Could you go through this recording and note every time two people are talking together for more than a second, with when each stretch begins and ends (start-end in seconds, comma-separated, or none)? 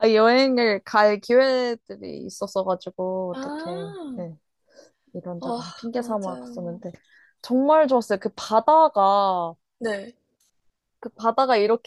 5.4-6.8